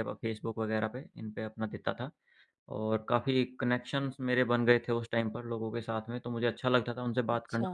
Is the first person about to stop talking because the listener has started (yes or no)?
no